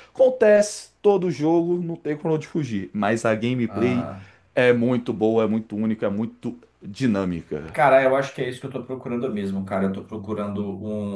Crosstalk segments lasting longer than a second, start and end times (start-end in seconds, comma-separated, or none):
none